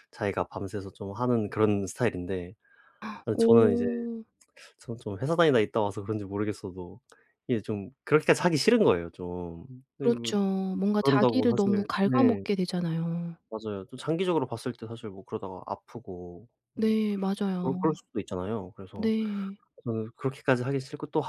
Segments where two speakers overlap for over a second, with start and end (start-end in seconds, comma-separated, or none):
11.0-12.4